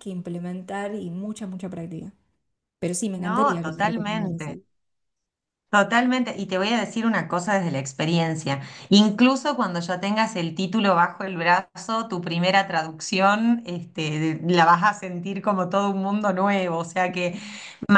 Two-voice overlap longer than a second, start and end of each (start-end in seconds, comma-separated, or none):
3.2-4.6